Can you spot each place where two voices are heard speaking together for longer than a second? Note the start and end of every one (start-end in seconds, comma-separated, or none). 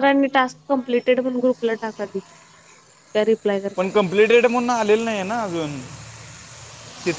none